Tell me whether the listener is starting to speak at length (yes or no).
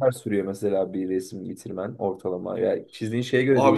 yes